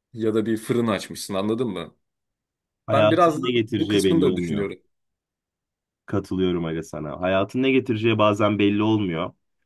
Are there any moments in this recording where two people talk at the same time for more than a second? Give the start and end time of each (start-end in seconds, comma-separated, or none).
2.9-4.7